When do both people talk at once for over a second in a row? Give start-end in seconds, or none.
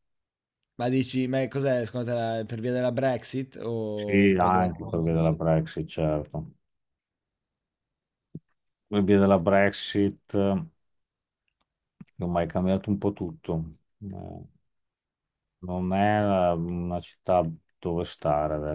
3.9-5.4